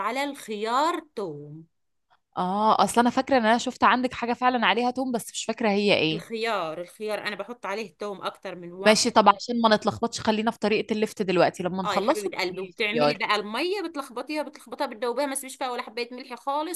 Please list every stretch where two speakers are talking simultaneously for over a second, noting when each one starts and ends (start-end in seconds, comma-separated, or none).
11.8-13.2